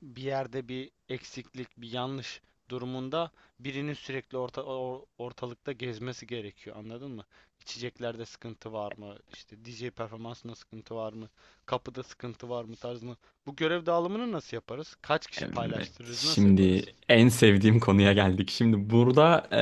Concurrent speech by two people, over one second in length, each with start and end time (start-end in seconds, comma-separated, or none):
15.4-16.9